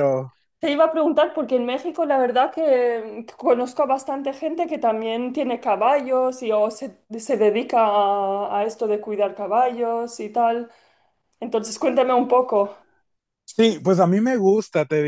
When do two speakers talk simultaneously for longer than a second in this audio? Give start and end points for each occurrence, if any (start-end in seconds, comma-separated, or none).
none